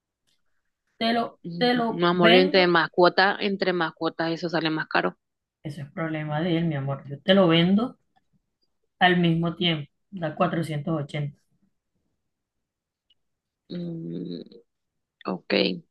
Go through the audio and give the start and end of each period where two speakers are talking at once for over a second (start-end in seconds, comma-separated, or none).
1.4-2.8